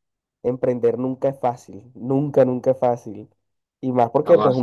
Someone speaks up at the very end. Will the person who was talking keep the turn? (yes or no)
yes